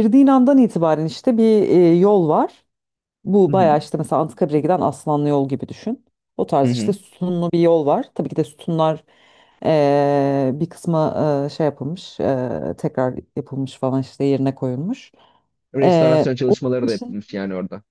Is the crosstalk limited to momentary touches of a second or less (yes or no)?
no